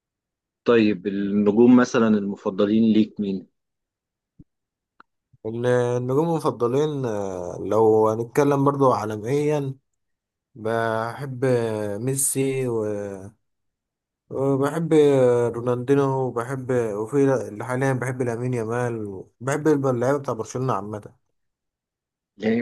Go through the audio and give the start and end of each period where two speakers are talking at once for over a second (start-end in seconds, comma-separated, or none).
none